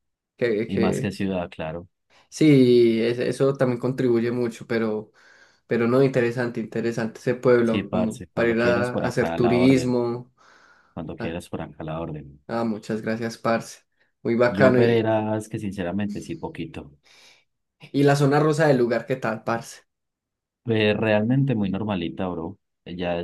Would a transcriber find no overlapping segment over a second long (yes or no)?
no